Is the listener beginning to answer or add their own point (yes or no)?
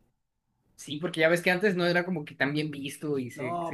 yes